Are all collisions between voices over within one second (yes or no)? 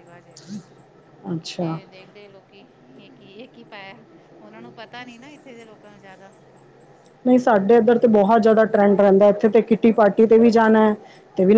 yes